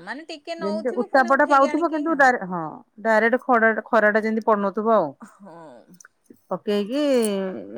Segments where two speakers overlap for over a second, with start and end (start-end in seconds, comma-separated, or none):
0.6-2.2